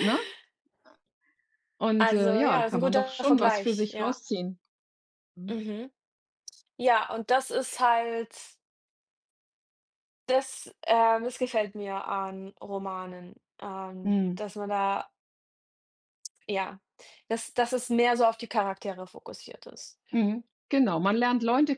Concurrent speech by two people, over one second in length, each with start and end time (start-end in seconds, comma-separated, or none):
2.0-4.2